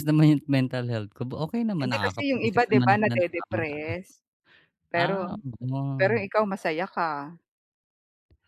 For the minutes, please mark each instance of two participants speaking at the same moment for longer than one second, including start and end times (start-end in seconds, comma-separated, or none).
1.8-3.6